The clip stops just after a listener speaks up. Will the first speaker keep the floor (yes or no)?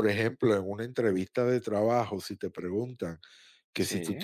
yes